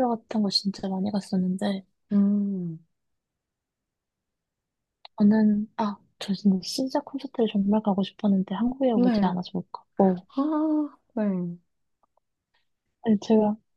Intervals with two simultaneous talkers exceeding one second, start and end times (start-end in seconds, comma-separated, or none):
none